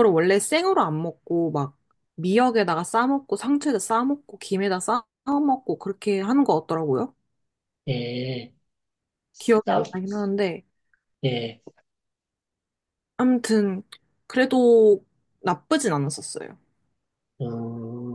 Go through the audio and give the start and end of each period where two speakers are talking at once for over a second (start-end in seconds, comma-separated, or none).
none